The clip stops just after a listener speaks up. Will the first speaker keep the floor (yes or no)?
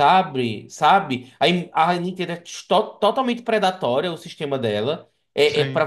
yes